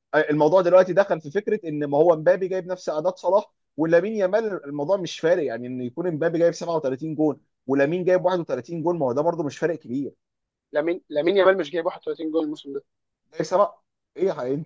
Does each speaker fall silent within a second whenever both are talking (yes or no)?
yes